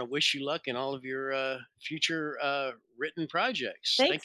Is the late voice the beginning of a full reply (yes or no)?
yes